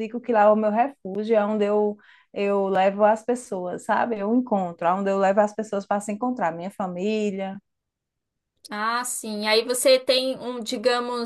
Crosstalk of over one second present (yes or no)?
no